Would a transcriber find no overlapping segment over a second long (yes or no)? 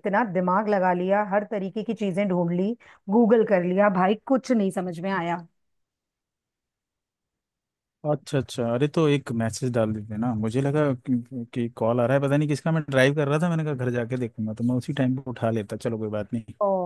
yes